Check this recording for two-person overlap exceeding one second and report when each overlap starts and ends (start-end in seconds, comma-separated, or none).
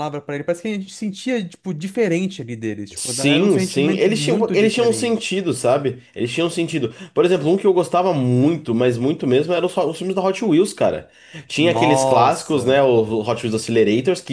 2.9-5.3, 11.6-12.8